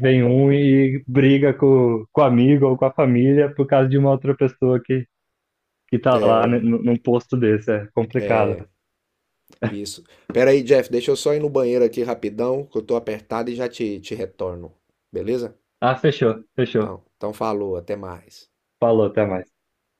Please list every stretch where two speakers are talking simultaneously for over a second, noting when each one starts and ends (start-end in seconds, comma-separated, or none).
none